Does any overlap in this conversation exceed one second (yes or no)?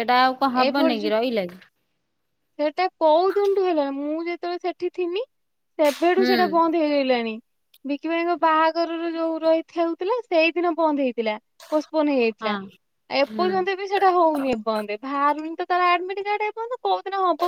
no